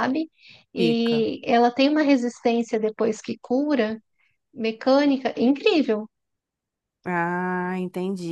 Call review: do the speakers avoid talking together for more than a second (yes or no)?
yes